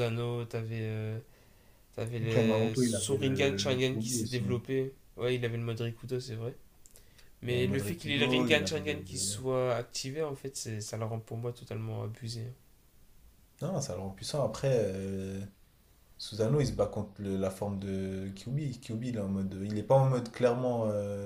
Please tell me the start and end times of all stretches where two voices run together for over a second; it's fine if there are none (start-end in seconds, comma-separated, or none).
2.8-4.4, 7.5-9.4